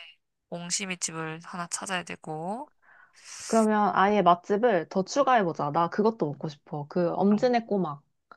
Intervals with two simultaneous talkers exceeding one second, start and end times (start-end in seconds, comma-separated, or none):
none